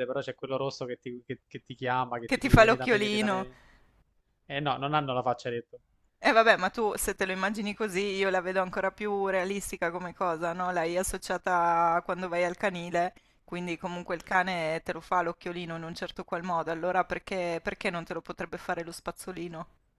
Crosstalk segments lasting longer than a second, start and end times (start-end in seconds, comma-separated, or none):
2.2-3.5